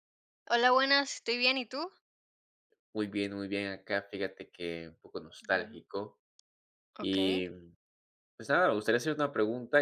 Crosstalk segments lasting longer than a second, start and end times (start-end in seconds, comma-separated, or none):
none